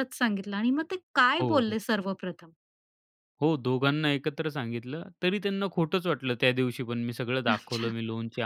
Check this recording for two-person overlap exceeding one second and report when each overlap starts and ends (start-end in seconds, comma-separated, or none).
none